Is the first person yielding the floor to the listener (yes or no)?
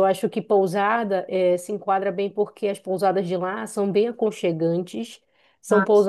no